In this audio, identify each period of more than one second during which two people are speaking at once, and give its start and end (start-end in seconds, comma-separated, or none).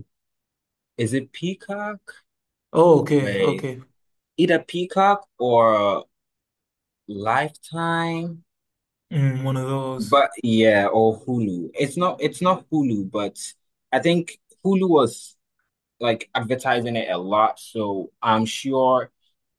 none